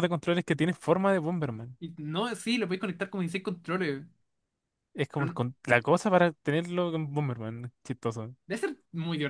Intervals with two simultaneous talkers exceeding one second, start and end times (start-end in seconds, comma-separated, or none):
none